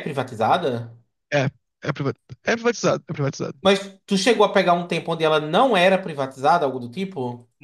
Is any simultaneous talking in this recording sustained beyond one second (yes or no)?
no